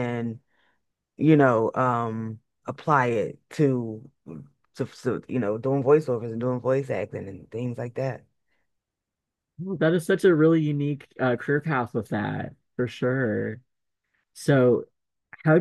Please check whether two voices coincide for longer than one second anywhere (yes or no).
no